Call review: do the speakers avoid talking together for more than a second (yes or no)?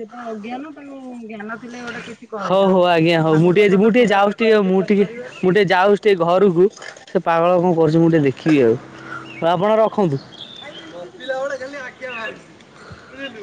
no